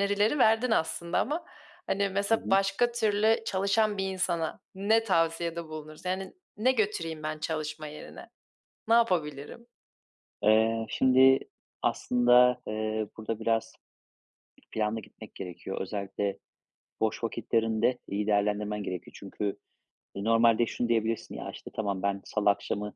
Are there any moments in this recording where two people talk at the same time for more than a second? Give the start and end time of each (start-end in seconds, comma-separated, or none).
none